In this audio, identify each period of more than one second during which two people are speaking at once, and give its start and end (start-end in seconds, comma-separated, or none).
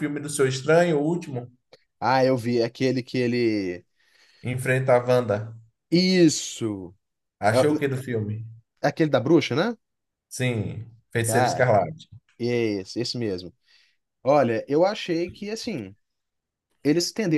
none